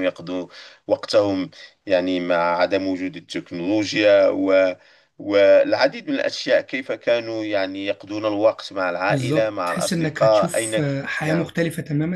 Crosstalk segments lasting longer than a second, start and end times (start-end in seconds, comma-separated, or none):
9.1-11.5